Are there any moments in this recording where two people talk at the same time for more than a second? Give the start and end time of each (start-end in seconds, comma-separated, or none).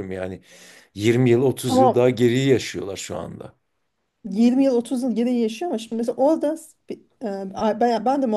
none